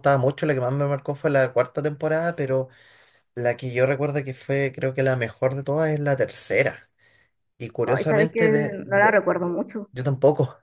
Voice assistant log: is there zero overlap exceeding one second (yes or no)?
no